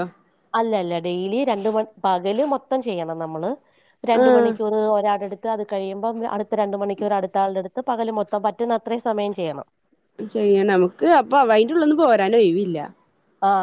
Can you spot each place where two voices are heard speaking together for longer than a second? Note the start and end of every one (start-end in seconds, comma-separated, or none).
none